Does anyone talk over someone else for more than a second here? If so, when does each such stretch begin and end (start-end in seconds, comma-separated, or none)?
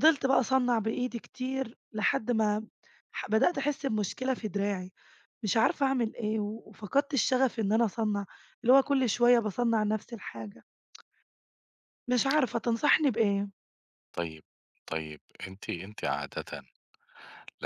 none